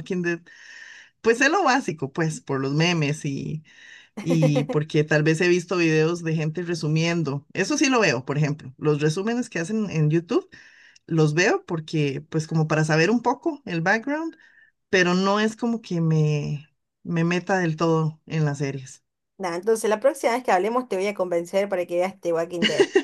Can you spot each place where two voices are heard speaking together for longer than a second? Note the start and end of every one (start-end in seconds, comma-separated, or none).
none